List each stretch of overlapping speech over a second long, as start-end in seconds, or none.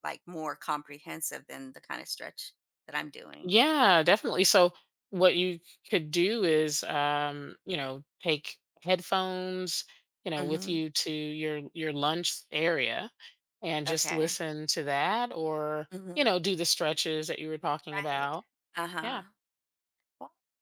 none